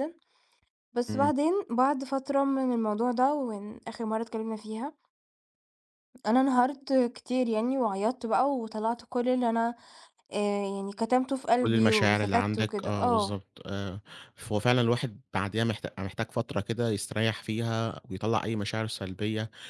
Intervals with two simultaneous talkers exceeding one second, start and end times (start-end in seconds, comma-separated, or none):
11.6-13.4